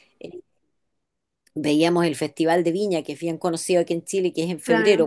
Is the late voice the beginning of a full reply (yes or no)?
no